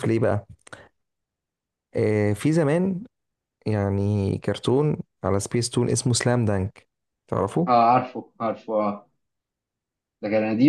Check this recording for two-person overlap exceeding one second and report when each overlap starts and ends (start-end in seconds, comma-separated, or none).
none